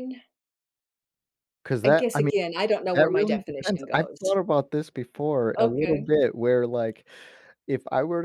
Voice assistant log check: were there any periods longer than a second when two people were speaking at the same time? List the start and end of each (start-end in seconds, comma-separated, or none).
2.9-4.2